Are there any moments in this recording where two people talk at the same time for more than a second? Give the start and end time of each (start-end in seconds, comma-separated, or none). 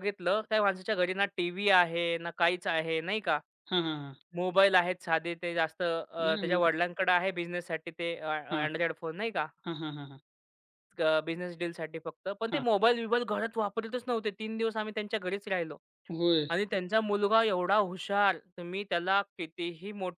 none